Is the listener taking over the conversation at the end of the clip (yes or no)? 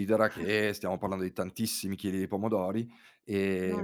no